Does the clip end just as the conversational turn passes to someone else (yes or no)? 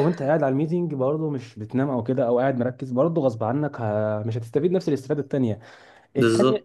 no